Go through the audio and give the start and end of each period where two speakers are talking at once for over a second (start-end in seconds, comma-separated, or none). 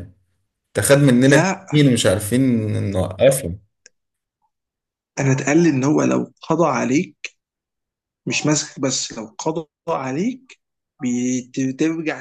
none